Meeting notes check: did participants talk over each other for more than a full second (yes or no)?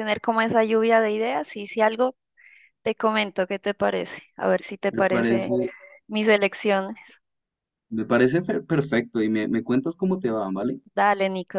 no